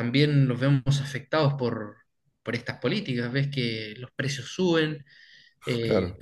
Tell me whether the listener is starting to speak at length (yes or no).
no